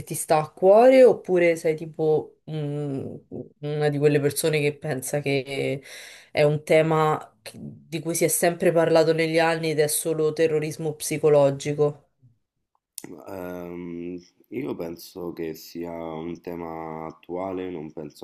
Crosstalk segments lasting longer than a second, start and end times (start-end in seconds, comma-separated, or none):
none